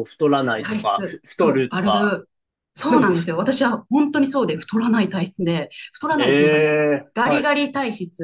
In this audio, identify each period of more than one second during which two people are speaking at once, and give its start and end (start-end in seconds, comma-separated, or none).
0.6-2.1